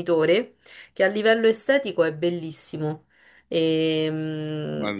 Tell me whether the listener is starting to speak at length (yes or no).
yes